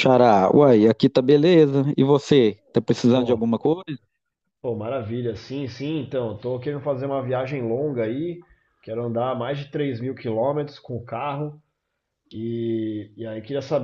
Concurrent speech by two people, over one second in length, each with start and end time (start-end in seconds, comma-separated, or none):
none